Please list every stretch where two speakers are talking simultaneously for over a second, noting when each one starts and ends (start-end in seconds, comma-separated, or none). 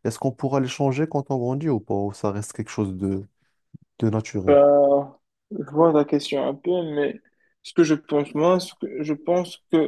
none